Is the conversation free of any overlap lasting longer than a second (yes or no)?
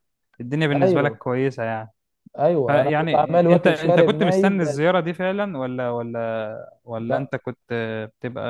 no